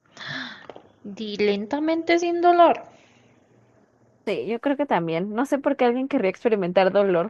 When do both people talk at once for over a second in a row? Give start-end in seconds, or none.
none